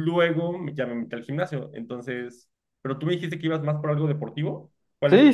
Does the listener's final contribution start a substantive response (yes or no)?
yes